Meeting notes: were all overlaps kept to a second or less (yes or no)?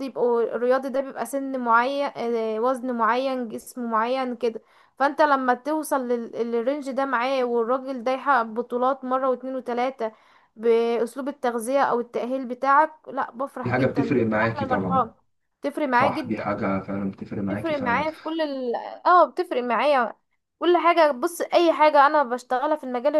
no